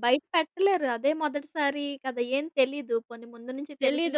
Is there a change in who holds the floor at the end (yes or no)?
yes